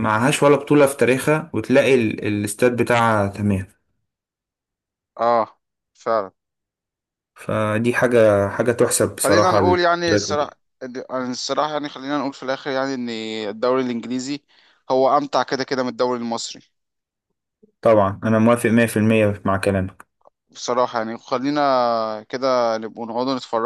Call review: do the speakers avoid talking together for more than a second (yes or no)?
no